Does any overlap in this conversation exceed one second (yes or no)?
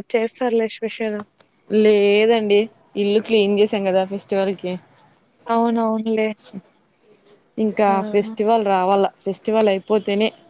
no